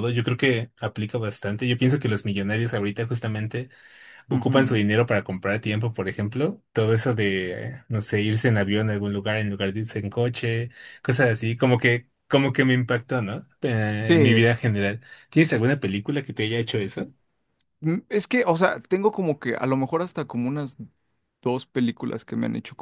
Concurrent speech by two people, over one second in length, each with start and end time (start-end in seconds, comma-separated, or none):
none